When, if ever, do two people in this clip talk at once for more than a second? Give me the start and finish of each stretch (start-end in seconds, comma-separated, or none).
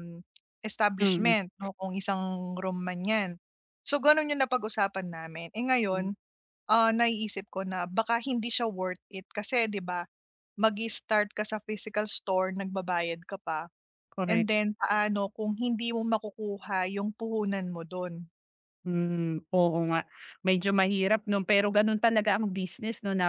none